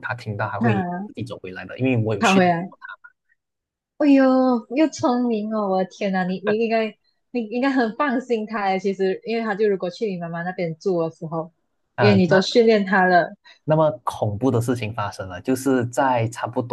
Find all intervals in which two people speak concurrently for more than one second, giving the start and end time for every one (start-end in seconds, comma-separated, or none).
none